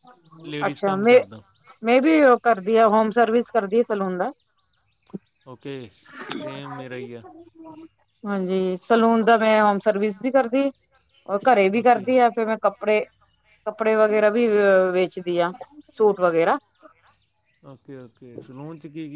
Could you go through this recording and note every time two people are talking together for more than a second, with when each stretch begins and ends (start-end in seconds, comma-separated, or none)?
none